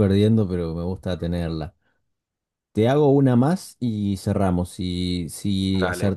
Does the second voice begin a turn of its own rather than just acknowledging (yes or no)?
no